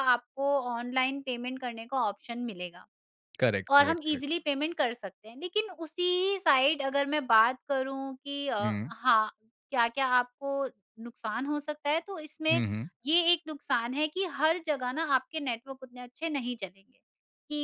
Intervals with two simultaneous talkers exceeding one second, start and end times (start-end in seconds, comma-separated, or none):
none